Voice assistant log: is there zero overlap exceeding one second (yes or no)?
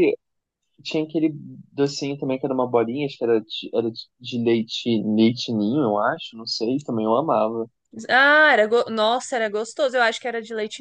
yes